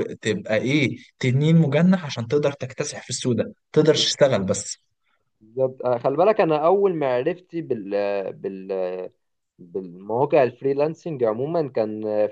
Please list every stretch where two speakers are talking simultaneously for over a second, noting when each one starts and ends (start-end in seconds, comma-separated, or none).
none